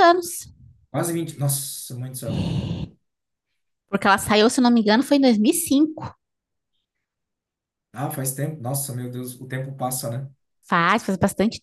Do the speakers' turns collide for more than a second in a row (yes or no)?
no